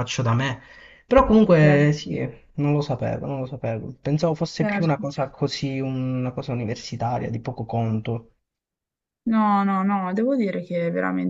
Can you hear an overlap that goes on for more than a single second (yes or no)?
no